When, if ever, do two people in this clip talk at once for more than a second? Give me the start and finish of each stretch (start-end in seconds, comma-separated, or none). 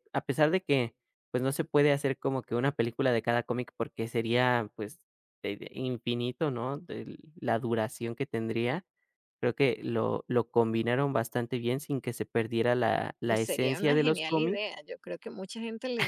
13.3-14.7